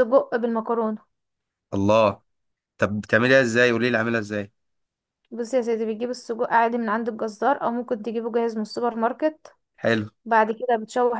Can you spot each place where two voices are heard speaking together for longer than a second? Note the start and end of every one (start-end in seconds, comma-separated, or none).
none